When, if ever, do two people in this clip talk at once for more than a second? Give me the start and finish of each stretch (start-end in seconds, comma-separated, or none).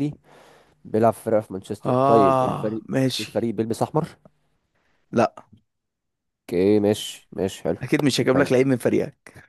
1.9-3.3